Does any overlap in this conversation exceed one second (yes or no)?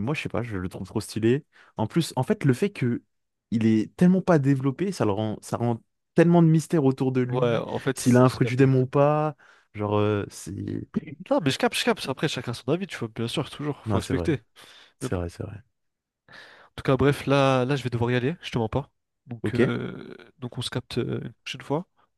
yes